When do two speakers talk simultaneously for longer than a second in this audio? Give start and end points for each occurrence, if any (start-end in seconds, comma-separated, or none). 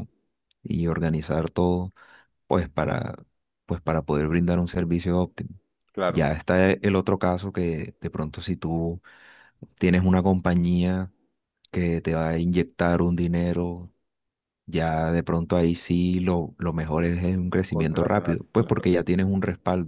17.7-18.9